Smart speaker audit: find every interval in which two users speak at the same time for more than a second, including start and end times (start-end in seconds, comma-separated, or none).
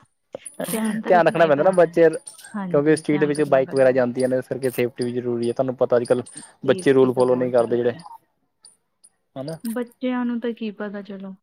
2.7-4.0, 6.7-7.9